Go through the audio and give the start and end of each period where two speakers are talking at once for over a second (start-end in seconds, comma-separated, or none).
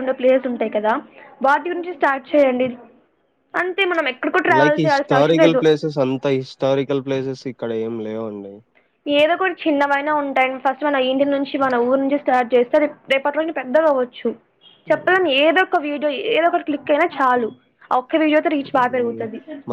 none